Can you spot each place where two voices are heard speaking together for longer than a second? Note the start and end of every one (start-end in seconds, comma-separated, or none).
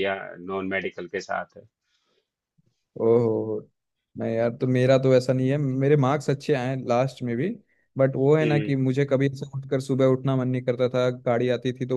none